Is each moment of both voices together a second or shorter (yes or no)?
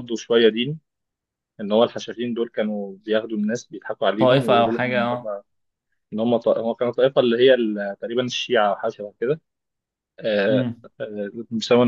no